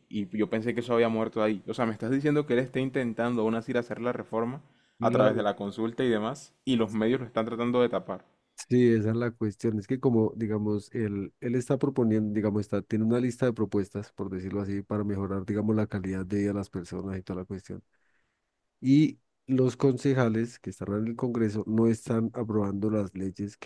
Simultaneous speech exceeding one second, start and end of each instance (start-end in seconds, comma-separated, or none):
none